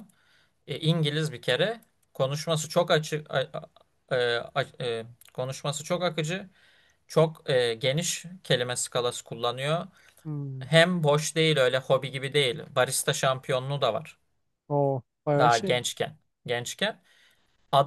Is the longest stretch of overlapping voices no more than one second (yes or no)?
yes